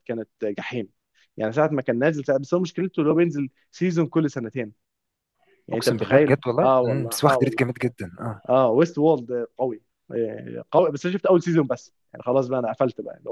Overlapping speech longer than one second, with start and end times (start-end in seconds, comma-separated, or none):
5.7-7.7